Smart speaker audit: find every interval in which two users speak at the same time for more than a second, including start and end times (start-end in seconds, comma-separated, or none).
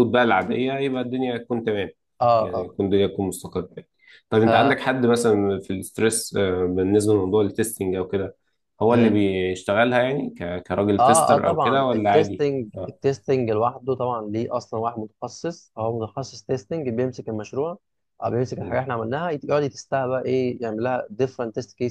11.0-12.4